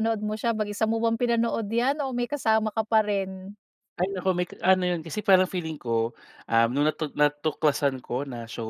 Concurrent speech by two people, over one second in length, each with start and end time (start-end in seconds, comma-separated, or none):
none